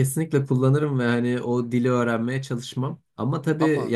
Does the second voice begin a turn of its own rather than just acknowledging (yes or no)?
no